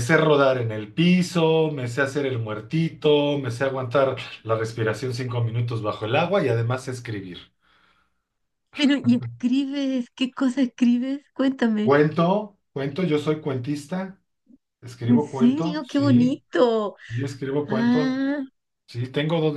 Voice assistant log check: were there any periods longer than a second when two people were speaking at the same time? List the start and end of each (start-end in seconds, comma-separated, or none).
15.1-16.4